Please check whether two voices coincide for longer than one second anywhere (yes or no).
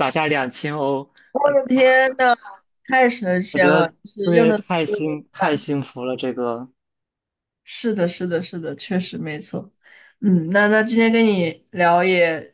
yes